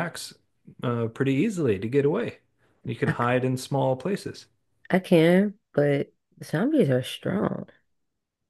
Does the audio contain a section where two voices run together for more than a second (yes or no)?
no